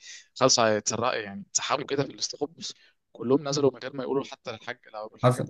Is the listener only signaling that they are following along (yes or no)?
no